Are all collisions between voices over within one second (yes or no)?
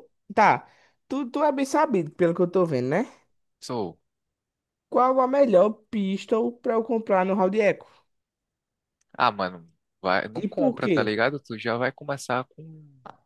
yes